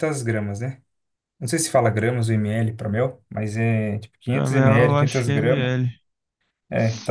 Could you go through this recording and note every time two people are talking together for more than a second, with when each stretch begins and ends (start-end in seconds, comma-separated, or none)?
4.3-5.7